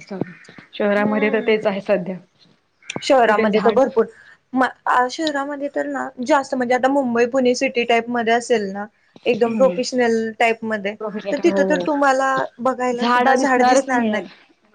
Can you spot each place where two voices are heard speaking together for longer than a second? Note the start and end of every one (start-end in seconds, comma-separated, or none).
13.0-14.2